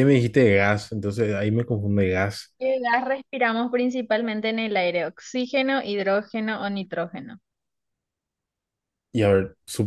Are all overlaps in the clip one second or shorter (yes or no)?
yes